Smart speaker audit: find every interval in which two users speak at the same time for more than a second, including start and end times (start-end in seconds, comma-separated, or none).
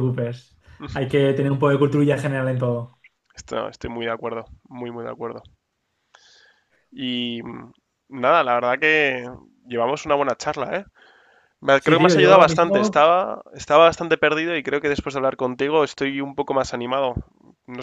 11.8-13.0